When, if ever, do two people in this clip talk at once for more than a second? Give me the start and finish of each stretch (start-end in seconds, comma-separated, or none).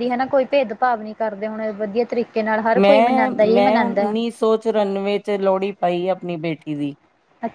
2.8-4.1